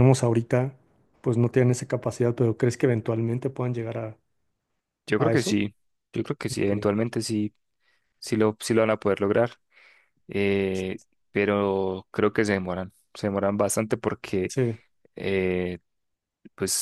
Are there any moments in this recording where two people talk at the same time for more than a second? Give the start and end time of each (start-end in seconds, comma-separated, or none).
none